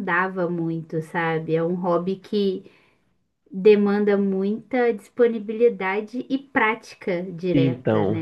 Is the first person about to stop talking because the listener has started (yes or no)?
yes